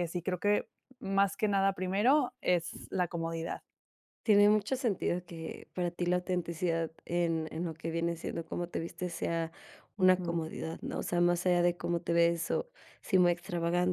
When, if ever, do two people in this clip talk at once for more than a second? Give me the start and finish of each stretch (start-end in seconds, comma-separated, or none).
none